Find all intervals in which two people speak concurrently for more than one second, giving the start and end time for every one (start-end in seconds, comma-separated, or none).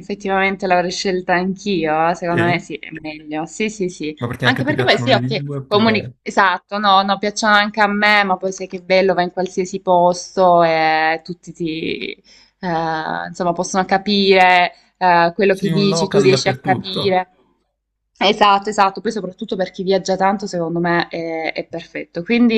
4.2-6.2, 15.6-17.0